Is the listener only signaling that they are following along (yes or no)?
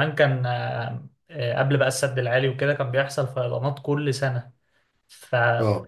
yes